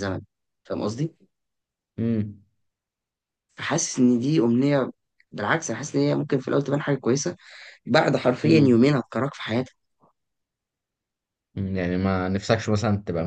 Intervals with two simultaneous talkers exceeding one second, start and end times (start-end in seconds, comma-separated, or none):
none